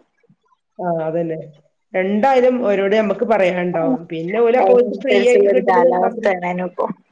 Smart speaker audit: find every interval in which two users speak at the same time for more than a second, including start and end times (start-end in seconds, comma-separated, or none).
4.6-6.3